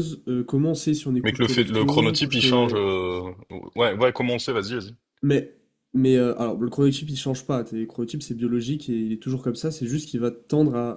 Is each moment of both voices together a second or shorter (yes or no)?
no